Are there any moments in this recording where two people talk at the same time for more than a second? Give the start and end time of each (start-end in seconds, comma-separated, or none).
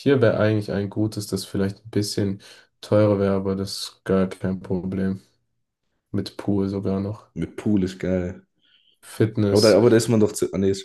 none